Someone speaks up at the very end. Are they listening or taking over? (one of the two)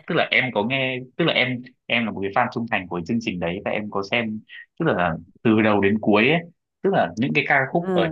listening